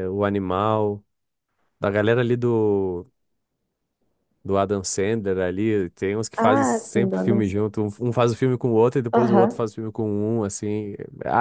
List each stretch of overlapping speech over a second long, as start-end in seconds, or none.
6.4-7.7